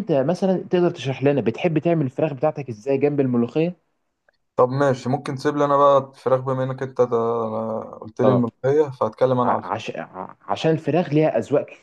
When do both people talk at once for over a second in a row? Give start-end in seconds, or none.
none